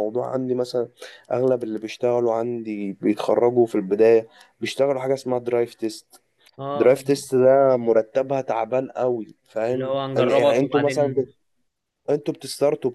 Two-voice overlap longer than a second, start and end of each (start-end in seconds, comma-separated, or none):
9.7-11.2